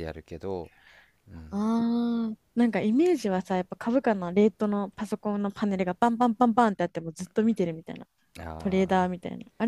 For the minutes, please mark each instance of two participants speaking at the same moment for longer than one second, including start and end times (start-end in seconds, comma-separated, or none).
none